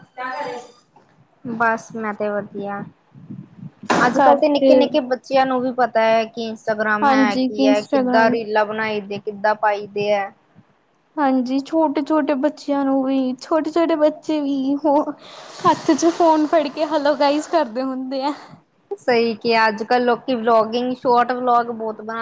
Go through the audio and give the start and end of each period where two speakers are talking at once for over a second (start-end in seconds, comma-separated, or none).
7.0-8.3